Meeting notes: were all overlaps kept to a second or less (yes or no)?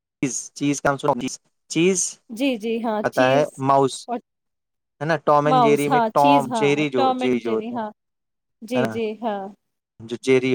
no